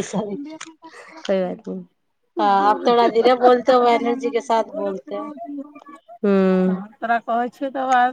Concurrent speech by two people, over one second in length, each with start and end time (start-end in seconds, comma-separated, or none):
none